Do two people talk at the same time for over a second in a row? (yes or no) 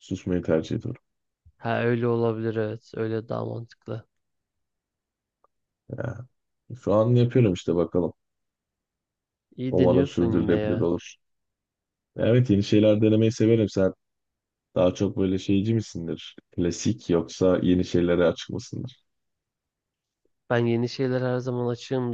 yes